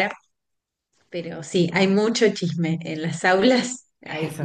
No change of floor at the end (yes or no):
no